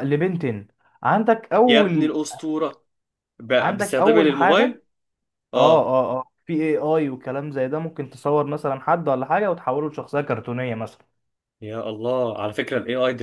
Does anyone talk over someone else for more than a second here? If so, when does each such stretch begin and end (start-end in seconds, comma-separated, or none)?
3.6-4.8